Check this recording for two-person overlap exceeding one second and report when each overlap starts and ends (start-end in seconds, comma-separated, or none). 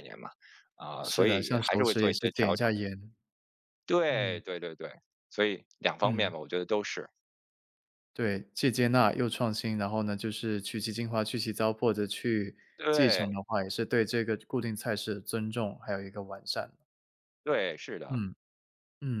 1.0-2.7